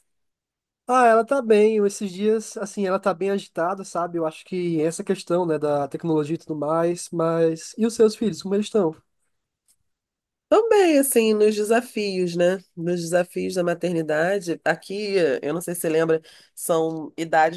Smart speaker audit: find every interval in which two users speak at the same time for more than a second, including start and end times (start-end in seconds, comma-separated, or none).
none